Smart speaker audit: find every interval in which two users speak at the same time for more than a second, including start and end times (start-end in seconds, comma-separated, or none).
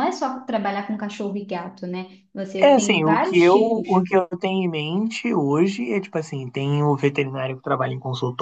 2.6-4.0